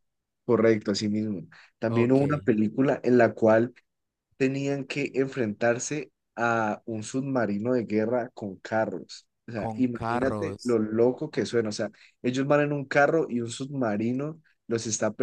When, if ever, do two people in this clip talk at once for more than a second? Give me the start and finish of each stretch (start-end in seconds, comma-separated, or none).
9.5-10.8